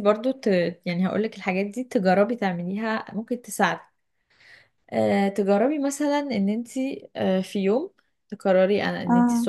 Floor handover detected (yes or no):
no